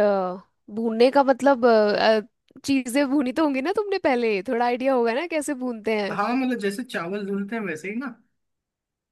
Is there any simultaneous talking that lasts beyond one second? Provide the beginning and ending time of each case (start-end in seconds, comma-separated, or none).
none